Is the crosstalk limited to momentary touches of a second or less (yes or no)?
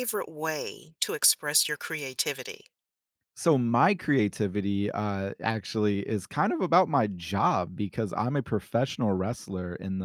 yes